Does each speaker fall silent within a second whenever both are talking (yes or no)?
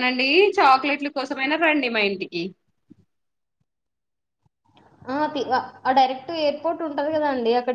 yes